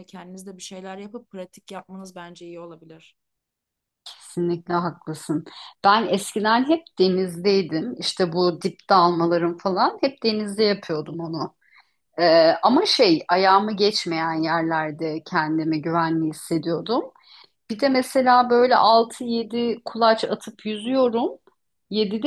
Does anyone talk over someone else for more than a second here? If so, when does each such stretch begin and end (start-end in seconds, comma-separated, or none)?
none